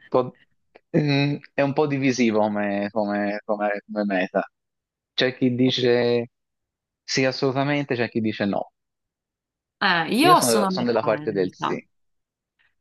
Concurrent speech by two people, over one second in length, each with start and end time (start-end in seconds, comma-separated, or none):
10.2-11.8